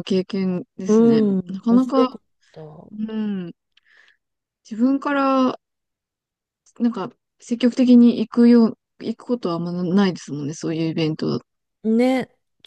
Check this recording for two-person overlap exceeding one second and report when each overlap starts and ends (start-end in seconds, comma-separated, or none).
0.9-2.2